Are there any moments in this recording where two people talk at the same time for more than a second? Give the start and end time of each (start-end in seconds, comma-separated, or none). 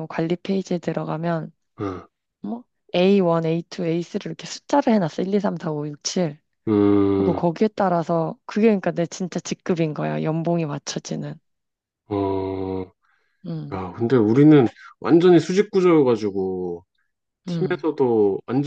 none